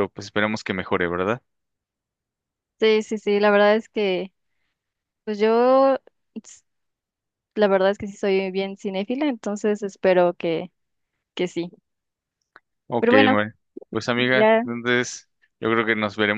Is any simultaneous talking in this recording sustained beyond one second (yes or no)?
no